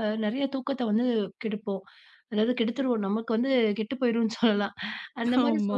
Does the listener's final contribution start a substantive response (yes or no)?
no